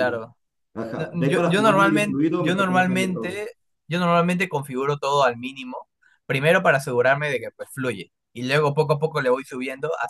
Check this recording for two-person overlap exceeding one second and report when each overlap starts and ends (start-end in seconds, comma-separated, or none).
0.9-3.4